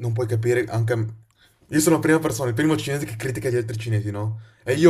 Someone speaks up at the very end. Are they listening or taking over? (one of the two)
listening